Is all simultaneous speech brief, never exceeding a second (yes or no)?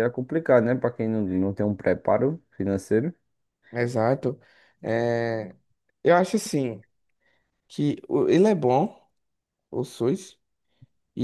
yes